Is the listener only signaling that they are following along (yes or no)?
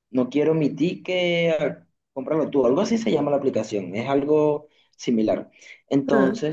yes